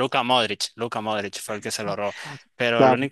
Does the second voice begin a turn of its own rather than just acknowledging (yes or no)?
yes